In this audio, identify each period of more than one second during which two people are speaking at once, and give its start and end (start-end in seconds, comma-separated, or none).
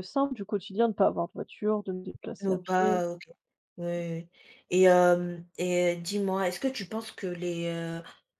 none